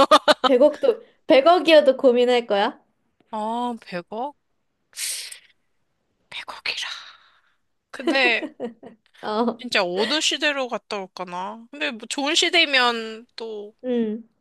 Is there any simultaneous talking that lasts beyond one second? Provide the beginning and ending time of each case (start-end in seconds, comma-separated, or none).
none